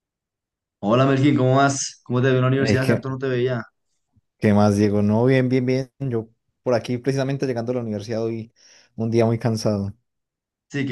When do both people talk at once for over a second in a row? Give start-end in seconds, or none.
none